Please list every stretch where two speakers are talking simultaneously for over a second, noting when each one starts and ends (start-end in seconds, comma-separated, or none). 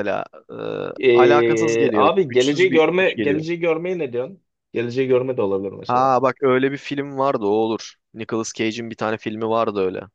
1.1-3.5